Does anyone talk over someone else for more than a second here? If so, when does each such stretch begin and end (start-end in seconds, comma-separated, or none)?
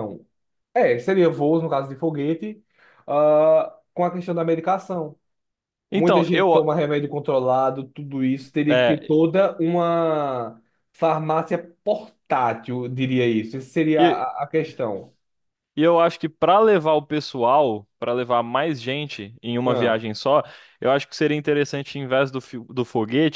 none